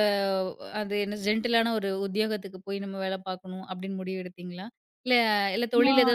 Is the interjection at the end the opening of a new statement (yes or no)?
no